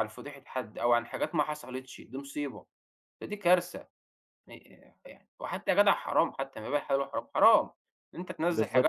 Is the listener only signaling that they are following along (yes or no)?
yes